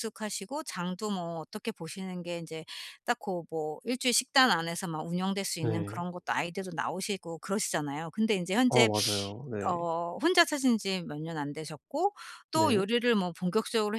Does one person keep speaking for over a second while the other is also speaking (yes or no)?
no